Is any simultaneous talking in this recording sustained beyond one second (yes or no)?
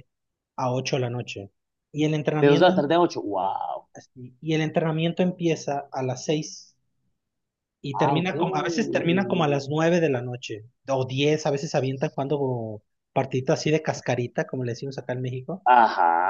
no